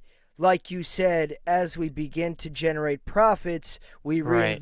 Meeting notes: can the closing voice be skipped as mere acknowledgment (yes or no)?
yes